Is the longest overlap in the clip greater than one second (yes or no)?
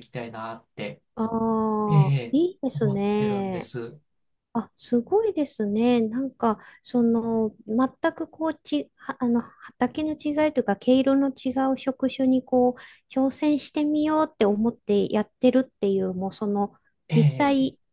yes